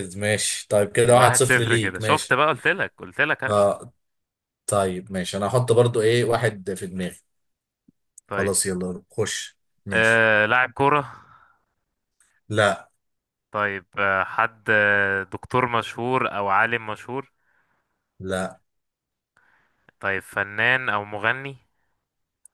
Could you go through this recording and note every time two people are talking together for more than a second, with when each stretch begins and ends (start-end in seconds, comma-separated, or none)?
1.1-2.4